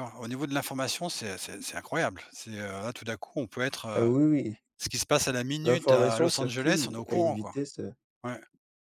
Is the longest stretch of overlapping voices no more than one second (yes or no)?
no